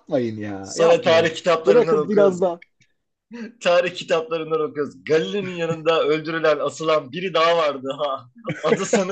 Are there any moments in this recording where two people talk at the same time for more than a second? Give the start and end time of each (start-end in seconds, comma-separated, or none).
0.6-2.4